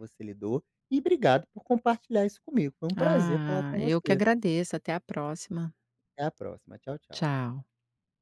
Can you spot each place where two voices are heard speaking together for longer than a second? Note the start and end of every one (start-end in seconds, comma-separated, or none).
3.0-4.2